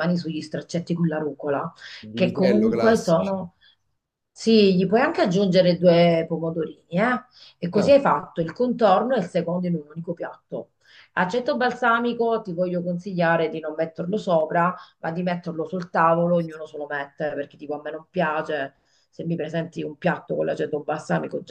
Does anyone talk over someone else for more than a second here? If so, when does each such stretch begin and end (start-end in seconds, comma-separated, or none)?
2.1-3.4